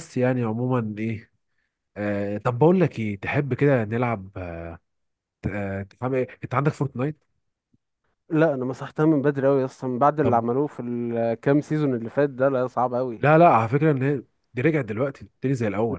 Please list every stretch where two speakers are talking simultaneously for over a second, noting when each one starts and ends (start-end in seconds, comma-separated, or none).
none